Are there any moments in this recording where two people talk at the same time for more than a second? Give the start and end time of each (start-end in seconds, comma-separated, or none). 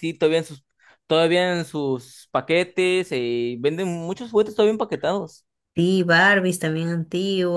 none